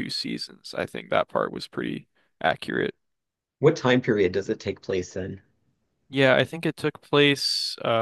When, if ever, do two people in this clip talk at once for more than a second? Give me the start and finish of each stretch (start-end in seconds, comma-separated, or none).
none